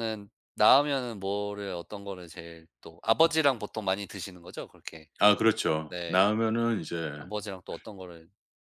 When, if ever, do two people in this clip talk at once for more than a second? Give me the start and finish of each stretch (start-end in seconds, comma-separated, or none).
none